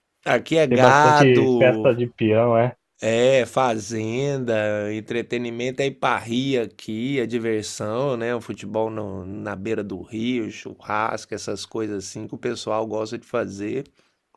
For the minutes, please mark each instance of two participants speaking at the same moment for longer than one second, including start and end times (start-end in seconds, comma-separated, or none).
0.7-1.9